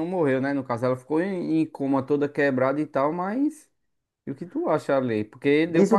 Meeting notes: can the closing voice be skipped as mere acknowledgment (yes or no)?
no